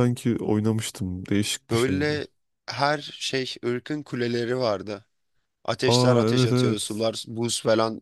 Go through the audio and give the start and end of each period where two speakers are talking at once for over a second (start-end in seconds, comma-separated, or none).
5.9-7.1